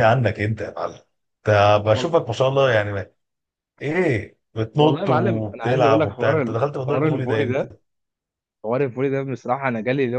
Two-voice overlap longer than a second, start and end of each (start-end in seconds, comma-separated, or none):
4.8-7.6